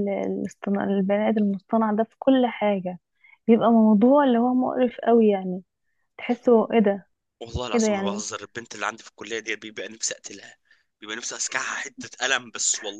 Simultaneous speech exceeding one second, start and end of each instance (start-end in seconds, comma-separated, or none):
none